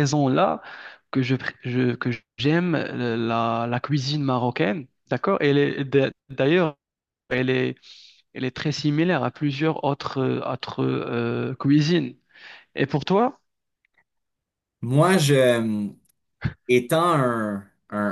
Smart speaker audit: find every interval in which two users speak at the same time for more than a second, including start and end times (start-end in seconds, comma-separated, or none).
none